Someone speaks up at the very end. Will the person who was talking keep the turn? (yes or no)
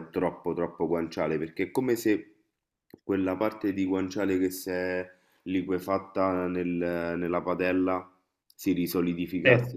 yes